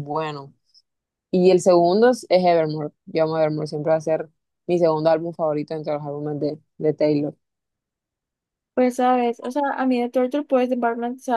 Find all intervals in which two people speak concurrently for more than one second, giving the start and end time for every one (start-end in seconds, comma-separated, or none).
none